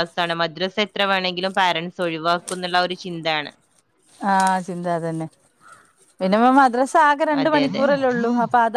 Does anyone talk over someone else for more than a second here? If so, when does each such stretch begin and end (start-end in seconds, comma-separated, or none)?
none